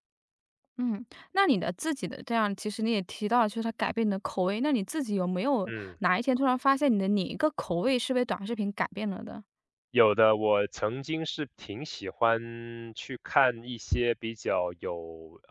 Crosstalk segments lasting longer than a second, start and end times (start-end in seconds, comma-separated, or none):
none